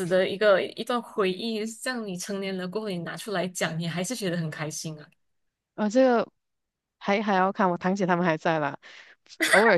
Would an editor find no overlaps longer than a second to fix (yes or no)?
yes